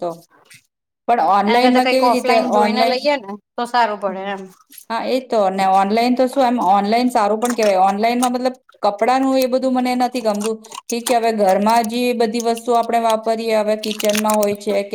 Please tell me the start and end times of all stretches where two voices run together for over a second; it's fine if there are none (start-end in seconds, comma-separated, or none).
1.5-3.1